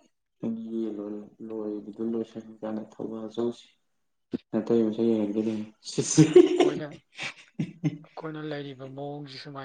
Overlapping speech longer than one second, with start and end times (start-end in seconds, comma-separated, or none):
none